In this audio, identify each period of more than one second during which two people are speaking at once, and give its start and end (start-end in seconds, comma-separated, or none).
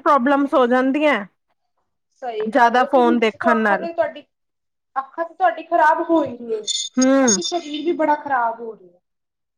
none